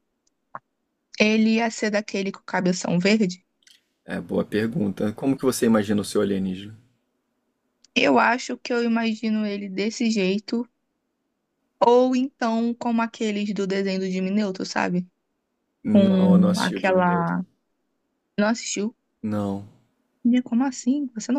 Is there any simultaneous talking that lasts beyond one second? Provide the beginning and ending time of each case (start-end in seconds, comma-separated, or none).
15.9-17.4